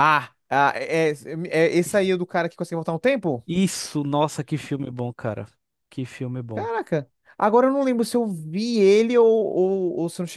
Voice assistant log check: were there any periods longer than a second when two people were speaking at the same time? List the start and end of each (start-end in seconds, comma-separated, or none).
none